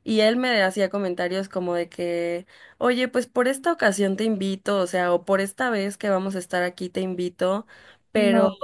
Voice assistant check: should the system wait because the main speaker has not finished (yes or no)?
yes